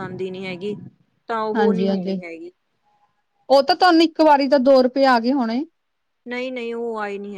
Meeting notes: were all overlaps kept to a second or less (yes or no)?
yes